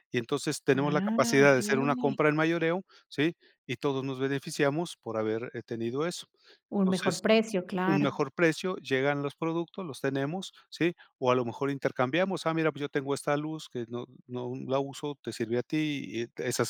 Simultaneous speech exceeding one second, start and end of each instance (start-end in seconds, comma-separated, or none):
0.7-2.2